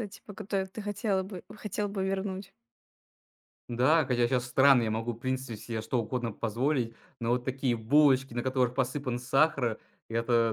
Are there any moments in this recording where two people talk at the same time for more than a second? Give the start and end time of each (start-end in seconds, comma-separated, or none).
none